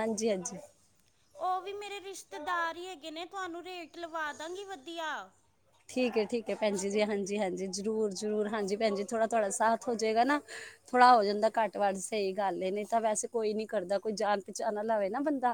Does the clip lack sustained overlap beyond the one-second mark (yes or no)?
yes